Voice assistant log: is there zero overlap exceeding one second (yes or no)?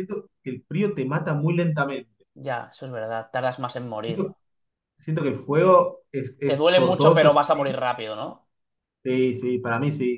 no